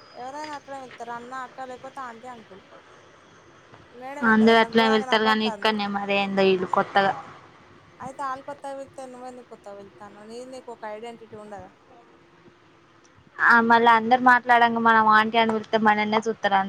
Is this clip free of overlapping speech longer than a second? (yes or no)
no